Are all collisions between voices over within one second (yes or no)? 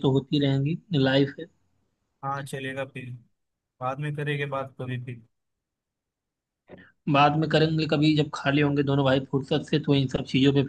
yes